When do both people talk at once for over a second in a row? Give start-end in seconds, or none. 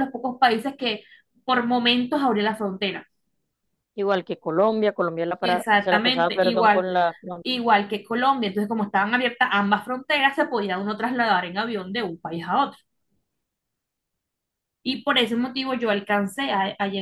5.4-6.9